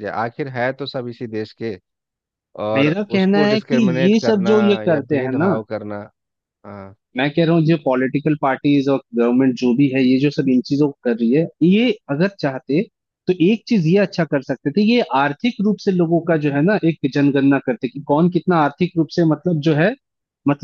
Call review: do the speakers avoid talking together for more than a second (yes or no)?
no